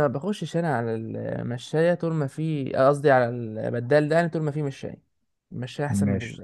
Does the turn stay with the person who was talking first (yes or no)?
no